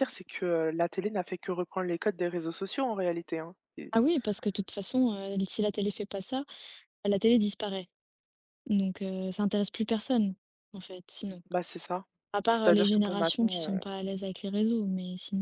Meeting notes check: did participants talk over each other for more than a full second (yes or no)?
yes